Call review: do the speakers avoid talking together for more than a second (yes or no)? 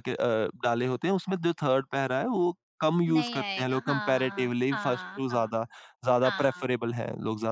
no